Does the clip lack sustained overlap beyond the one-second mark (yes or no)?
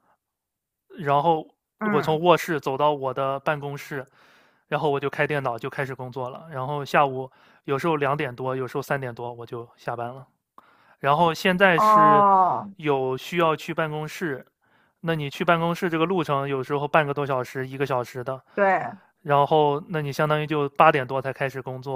yes